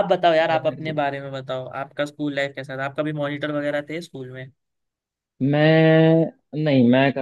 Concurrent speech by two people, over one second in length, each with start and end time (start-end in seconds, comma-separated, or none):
none